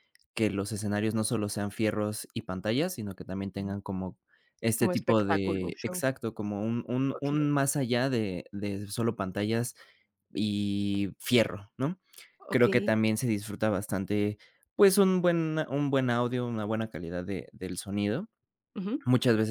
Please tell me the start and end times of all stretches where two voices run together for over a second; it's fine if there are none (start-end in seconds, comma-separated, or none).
4.8-6.0